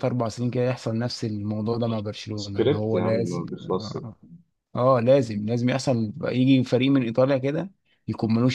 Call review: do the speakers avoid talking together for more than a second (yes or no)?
no